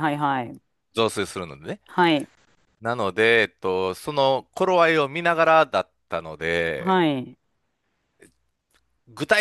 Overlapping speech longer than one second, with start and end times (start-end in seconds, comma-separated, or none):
none